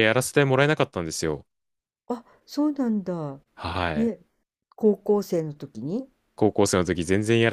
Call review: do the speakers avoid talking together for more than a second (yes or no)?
yes